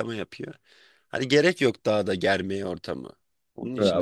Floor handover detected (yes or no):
yes